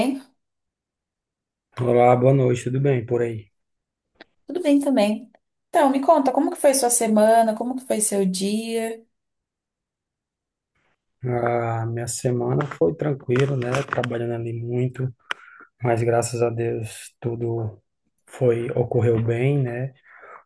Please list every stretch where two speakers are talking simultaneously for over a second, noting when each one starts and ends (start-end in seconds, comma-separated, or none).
none